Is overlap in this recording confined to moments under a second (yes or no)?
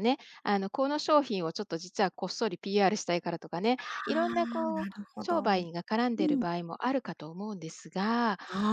no